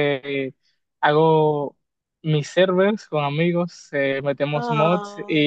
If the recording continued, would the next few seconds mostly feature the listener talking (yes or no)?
no